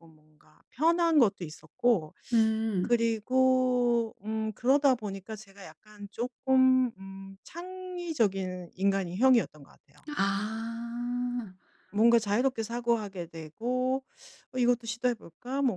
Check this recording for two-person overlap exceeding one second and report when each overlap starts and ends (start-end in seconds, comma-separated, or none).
none